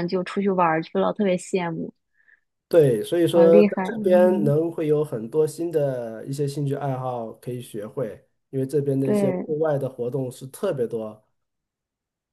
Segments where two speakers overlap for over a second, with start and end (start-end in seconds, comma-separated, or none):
3.3-4.5